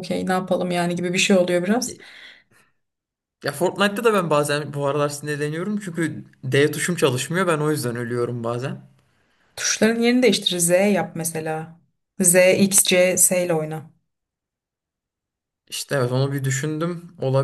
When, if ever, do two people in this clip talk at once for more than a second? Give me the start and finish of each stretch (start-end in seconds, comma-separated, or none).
none